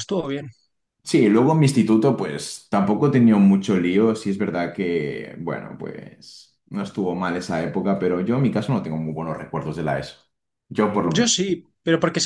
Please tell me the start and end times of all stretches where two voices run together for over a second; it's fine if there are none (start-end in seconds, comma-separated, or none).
none